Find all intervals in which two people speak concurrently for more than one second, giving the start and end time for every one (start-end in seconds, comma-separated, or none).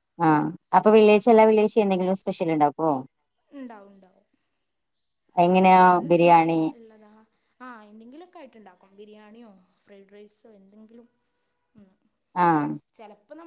none